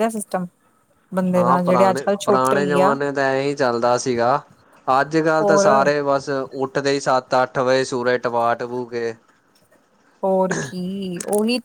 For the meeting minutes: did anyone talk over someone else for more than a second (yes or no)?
yes